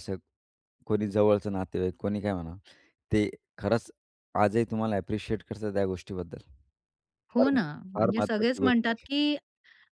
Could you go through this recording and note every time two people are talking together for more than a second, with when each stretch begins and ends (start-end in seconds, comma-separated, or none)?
7.4-9.1